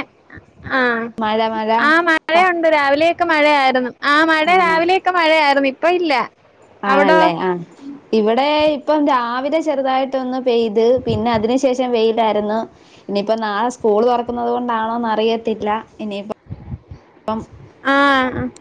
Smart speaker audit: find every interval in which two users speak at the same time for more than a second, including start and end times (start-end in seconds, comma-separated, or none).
none